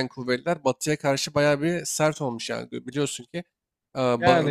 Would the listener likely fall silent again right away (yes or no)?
no